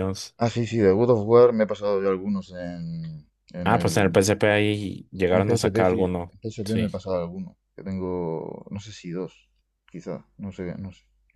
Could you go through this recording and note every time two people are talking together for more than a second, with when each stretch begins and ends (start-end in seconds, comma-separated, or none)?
5.3-6.9